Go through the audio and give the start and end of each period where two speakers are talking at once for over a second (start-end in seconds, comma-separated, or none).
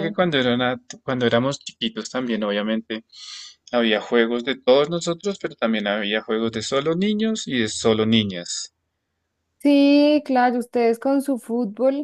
none